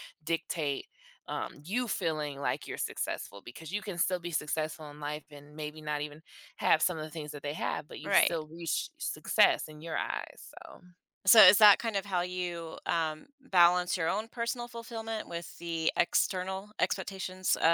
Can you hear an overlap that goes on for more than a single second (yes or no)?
no